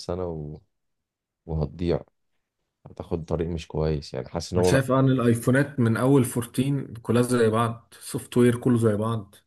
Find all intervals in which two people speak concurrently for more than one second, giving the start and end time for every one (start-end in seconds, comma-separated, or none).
none